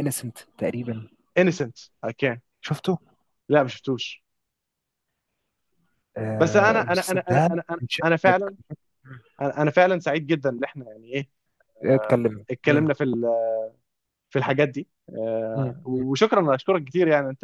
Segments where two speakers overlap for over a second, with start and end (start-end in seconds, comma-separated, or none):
6.4-8.5